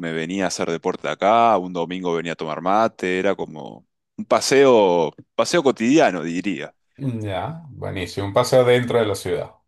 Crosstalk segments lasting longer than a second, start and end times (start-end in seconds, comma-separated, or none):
none